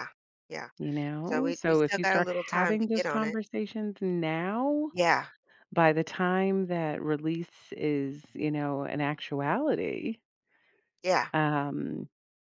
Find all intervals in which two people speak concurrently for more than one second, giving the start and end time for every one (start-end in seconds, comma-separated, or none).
1.2-3.4